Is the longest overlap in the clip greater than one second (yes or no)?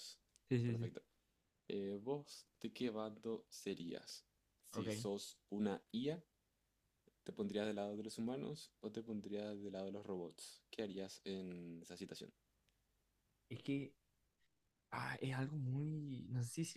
no